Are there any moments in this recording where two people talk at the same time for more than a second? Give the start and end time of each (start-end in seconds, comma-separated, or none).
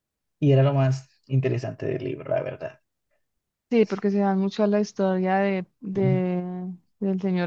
none